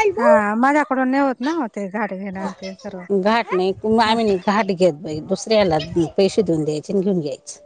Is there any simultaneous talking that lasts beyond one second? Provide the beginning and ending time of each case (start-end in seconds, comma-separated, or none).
none